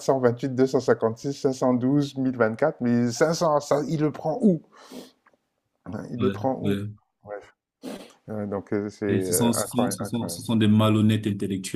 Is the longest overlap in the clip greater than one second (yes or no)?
yes